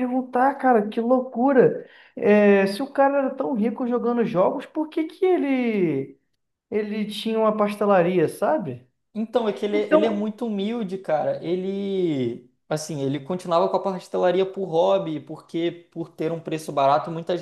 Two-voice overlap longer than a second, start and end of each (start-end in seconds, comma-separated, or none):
none